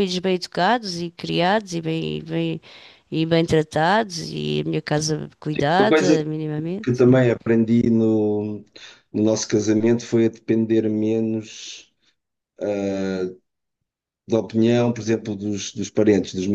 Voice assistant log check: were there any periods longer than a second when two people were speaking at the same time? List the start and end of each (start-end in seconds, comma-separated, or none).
none